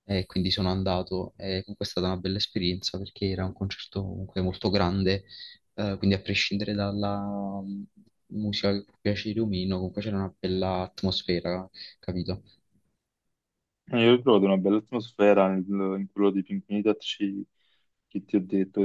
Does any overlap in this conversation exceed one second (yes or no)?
no